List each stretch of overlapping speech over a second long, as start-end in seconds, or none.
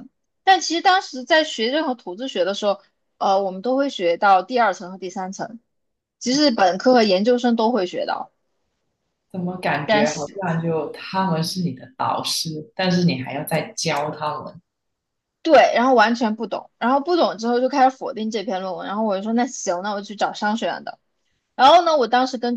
none